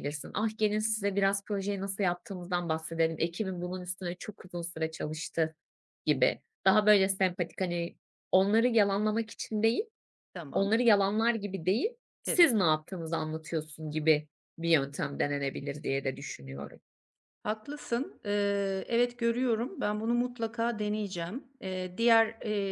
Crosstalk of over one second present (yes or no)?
no